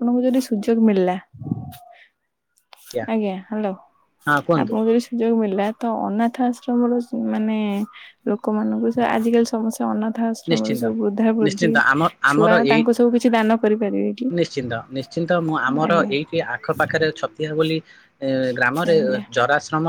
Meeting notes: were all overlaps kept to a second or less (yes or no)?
yes